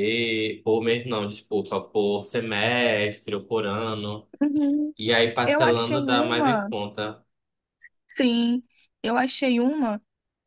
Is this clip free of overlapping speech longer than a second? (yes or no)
no